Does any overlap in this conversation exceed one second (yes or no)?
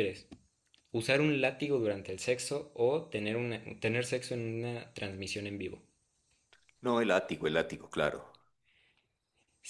no